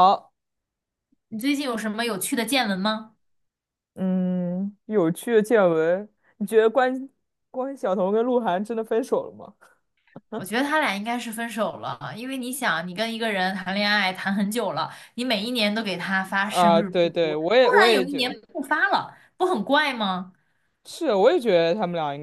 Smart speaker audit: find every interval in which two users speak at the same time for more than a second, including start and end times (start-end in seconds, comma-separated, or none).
16.4-18.4